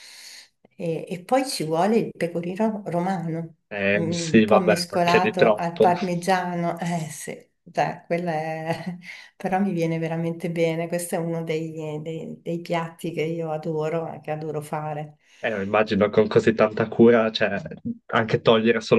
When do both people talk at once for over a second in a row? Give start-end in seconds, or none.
4.0-5.9